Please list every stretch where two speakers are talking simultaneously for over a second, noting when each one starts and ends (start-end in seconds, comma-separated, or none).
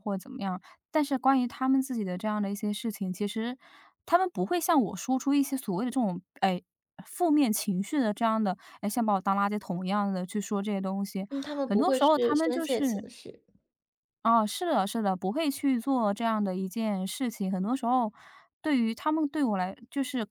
11.7-13.0